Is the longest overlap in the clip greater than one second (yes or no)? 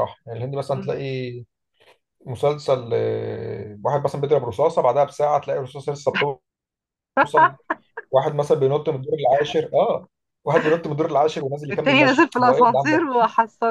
yes